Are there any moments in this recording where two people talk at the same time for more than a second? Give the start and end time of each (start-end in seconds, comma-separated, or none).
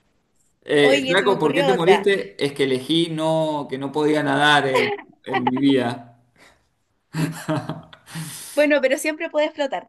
0.8-2.1